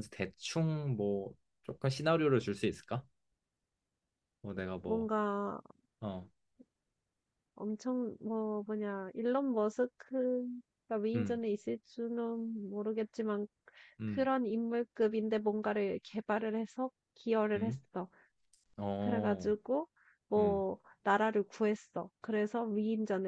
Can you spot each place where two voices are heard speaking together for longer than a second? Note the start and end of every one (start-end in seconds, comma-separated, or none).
none